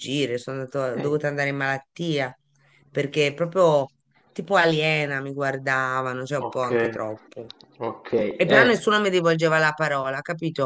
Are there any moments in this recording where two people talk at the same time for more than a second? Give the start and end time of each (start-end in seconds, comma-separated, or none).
none